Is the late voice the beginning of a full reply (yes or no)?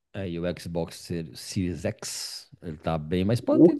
no